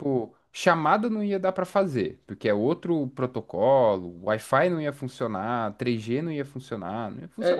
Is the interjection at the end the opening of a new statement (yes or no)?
yes